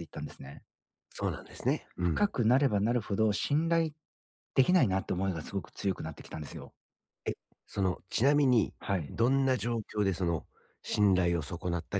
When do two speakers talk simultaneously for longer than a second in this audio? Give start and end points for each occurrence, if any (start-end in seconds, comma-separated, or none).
none